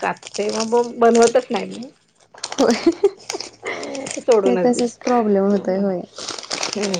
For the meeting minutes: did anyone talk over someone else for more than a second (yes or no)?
yes